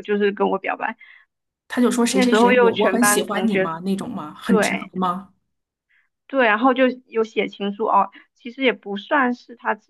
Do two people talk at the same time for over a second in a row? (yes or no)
yes